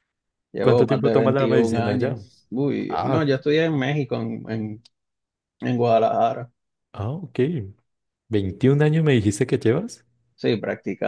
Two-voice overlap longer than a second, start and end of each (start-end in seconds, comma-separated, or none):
0.6-2.2